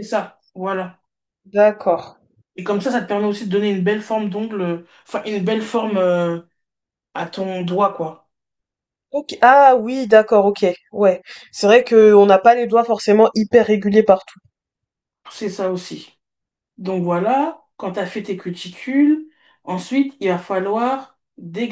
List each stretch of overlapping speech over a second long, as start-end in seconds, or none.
none